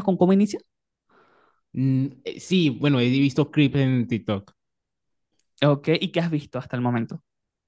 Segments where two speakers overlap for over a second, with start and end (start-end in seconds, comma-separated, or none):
none